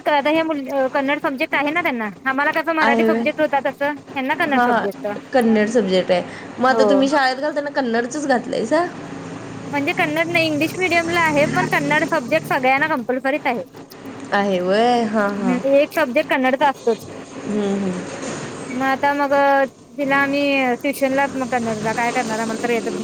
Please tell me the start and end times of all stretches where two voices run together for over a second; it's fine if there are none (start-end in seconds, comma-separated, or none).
none